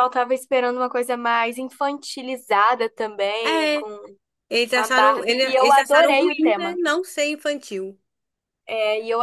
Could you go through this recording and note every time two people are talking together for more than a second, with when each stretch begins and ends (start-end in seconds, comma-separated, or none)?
4.7-6.8